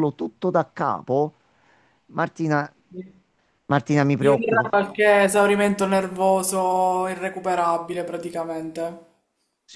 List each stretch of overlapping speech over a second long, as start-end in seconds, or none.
none